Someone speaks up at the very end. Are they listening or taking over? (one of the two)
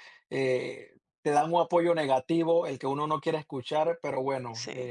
listening